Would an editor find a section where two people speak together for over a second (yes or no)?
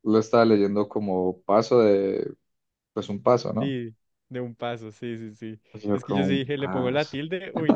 yes